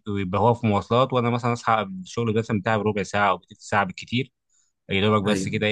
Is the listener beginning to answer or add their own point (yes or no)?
no